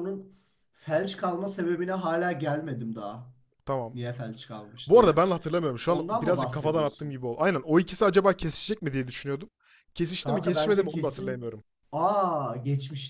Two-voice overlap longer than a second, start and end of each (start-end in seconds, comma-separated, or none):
5.9-7.2, 10.2-11.5